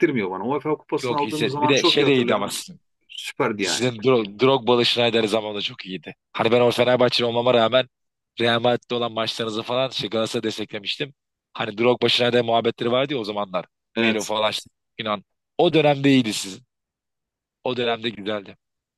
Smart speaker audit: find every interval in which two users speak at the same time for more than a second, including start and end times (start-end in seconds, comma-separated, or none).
1.0-2.6